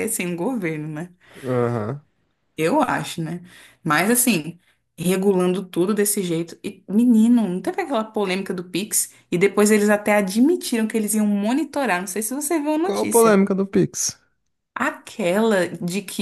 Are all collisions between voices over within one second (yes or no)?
yes